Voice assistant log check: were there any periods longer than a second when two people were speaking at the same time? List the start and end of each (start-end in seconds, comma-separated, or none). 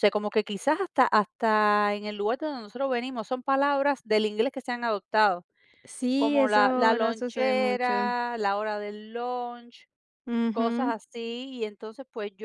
6.2-8.1